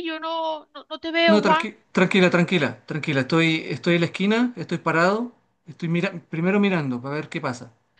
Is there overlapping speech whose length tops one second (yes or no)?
no